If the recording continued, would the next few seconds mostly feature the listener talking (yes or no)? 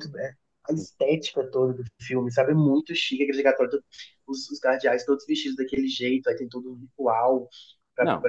no